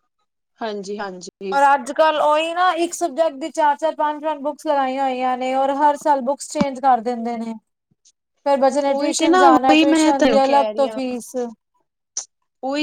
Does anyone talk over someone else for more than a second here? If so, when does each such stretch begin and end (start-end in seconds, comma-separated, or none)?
8.9-10.4